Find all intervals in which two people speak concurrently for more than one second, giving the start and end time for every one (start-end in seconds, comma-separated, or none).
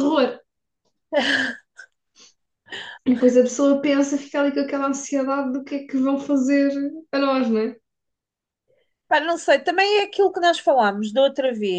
none